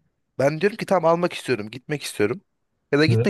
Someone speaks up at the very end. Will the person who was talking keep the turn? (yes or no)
yes